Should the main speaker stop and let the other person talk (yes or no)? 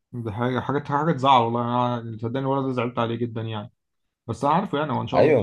no